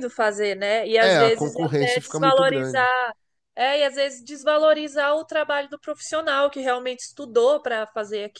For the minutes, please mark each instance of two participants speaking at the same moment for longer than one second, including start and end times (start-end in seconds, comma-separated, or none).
1.0-2.9